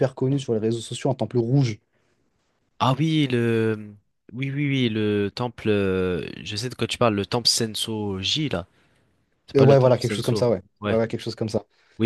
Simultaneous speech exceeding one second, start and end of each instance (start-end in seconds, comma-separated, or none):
9.6-11.0